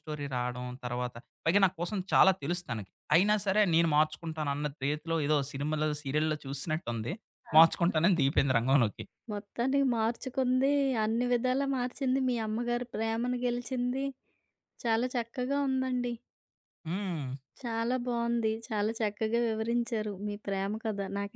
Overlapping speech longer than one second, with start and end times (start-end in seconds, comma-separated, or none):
none